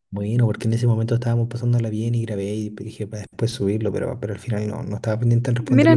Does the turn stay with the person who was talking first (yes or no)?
no